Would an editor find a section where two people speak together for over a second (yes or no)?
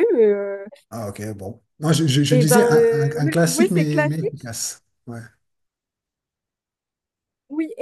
yes